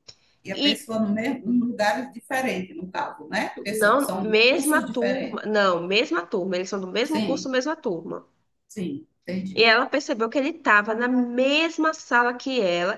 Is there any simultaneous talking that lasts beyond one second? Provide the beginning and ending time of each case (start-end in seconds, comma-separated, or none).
3.7-5.5